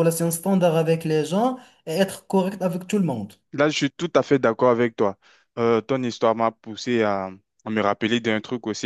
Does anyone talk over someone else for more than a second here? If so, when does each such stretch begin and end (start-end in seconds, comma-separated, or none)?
none